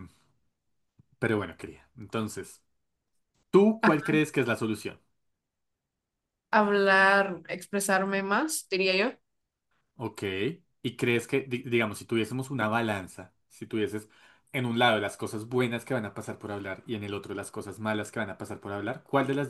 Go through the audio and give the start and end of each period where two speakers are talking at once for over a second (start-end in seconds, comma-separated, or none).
none